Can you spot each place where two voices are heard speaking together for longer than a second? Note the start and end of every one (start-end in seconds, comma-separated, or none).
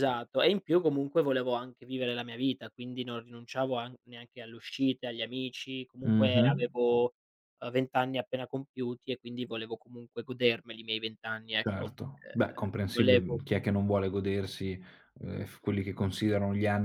none